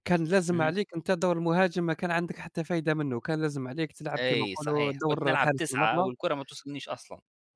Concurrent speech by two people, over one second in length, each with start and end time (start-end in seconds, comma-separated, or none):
4.2-6.1